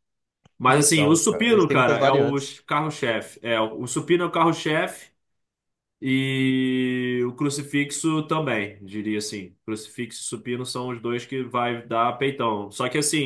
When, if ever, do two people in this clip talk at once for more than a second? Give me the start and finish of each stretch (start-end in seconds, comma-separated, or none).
0.7-2.5